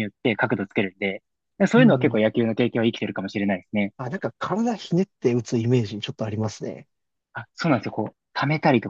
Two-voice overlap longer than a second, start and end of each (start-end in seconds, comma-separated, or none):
none